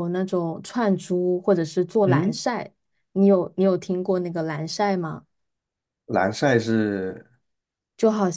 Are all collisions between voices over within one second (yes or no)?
yes